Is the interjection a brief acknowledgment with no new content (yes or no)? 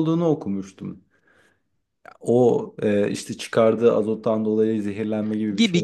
no